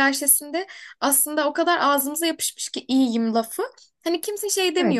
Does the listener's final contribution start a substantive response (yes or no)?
no